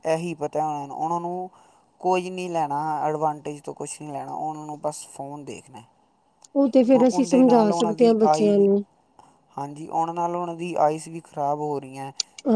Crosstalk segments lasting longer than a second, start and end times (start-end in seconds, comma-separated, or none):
6.9-8.7